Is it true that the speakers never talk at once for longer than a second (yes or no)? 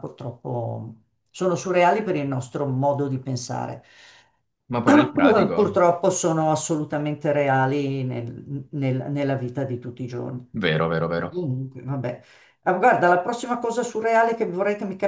yes